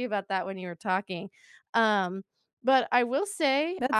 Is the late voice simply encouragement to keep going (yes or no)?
no